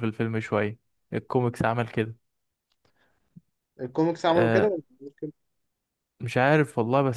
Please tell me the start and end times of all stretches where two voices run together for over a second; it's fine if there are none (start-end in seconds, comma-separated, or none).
none